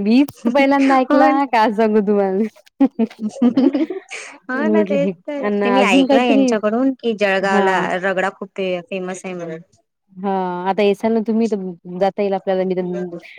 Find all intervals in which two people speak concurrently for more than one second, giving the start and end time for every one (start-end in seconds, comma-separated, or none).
4.6-6.5